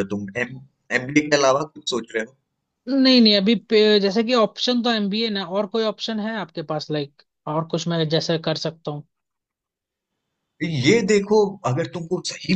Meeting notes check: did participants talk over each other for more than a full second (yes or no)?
no